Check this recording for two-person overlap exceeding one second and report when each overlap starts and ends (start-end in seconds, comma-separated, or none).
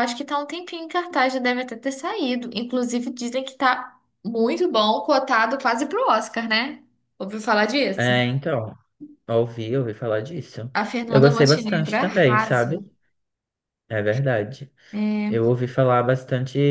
11.1-12.8